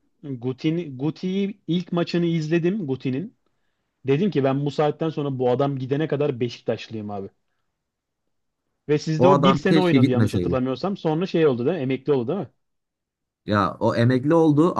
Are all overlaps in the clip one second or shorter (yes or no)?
no